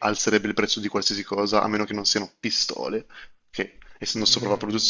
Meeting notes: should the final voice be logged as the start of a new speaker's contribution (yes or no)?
yes